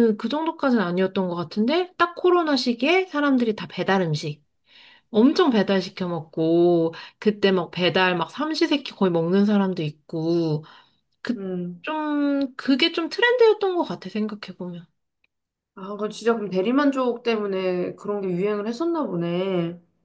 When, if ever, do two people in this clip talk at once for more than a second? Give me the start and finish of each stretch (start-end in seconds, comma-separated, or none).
none